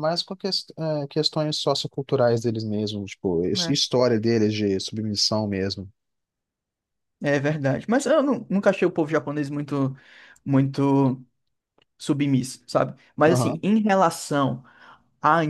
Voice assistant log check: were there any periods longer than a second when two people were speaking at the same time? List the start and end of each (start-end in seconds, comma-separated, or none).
none